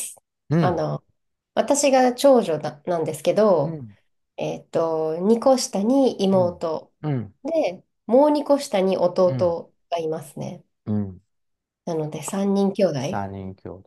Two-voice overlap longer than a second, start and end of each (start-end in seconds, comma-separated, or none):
none